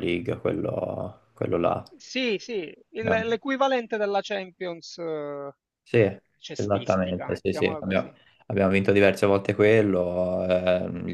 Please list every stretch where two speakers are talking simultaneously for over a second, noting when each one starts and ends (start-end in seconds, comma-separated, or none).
6.5-8.2